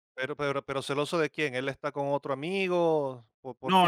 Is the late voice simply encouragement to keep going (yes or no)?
no